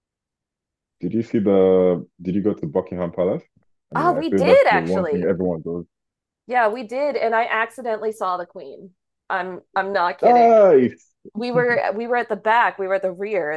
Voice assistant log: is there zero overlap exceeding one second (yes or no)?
no